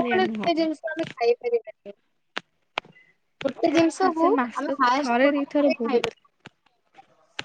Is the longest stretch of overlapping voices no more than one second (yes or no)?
no